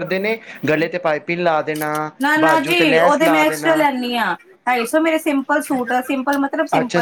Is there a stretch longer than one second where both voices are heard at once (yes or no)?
yes